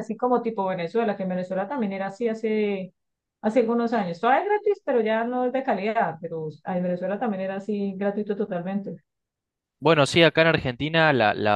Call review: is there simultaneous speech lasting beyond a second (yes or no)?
no